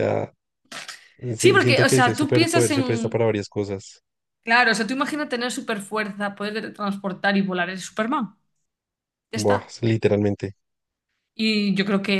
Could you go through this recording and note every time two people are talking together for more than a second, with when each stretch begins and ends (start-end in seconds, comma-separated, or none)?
1.4-3.2